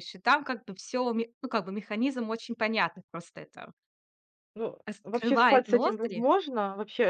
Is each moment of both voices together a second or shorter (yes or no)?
no